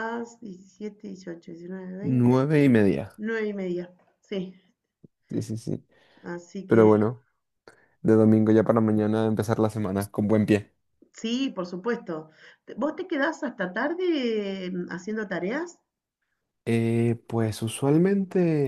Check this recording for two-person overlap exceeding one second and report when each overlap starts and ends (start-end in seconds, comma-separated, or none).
none